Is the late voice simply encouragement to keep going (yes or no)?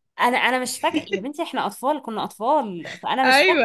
yes